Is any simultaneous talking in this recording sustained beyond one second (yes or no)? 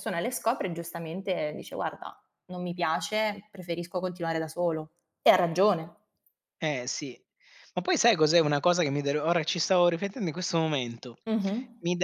no